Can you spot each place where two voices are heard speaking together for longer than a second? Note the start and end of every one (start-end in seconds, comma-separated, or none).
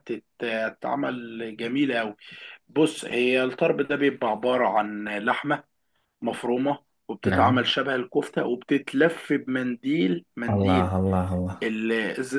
none